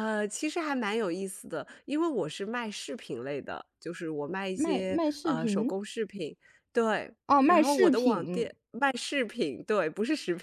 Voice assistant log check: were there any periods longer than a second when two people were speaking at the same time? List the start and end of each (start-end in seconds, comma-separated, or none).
4.5-5.8, 7.3-8.5